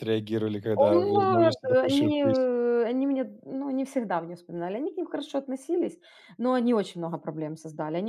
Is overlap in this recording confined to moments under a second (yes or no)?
no